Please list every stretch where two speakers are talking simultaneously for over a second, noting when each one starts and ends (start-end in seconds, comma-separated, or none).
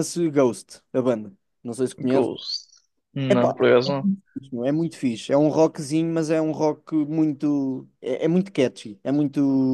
none